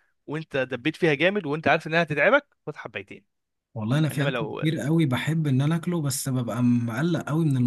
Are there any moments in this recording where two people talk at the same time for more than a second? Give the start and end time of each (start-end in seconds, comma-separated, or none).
none